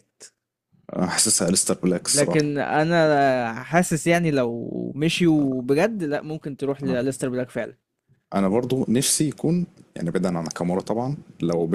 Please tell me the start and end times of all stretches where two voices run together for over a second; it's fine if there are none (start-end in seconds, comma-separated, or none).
none